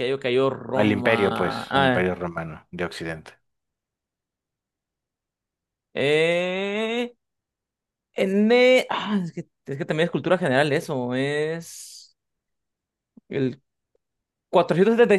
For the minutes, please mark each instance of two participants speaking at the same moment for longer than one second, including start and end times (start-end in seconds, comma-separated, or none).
0.8-2.1